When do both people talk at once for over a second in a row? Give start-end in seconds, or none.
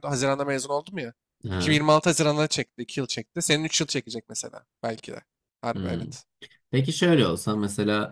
none